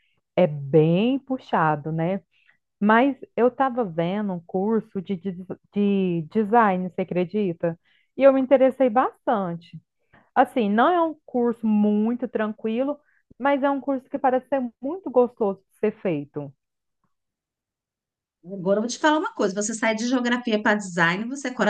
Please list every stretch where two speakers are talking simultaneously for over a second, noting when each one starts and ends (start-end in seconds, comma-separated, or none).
none